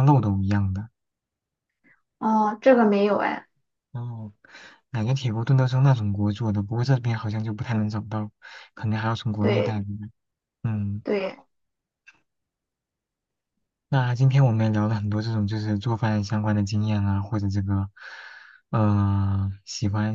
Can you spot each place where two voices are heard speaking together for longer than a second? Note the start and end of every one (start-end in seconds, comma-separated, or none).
none